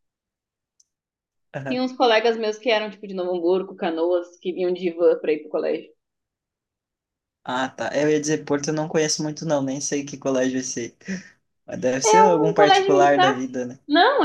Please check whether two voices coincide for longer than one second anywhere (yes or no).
yes